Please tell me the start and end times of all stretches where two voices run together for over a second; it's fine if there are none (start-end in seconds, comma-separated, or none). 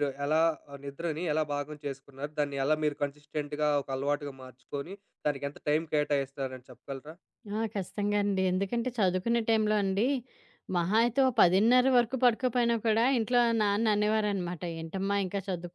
none